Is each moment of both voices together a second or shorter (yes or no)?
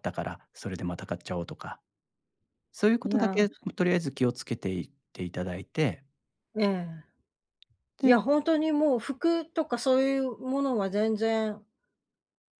yes